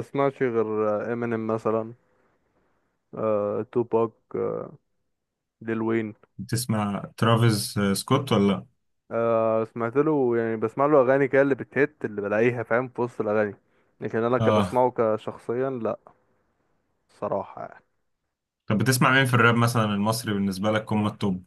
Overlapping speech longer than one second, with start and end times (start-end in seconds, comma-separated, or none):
none